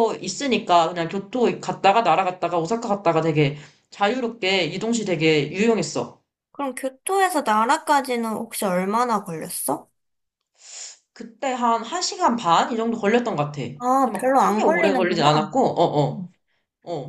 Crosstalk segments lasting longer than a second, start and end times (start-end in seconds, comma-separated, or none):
13.8-15.5